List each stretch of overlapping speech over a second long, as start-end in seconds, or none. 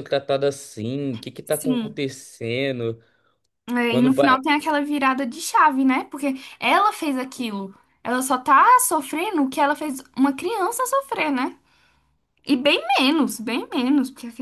none